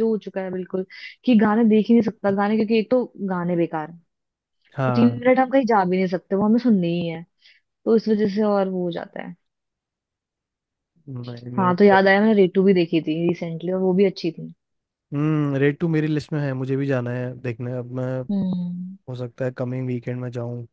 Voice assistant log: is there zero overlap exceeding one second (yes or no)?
yes